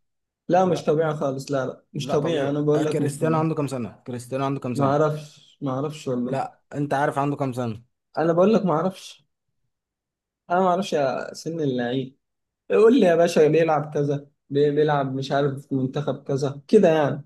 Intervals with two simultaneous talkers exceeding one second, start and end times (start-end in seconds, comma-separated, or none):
2.0-3.4